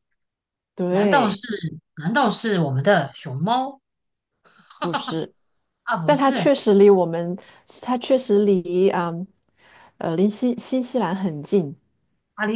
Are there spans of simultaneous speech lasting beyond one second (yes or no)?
no